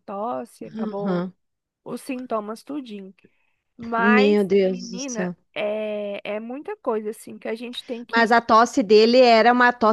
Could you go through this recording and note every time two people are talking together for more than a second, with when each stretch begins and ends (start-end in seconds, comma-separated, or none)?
4.0-5.4